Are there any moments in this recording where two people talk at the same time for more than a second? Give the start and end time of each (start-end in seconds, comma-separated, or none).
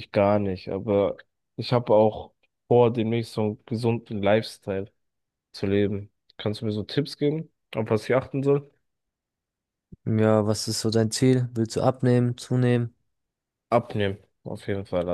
none